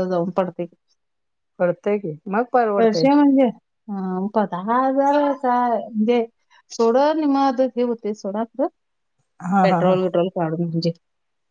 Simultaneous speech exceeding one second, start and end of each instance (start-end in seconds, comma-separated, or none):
none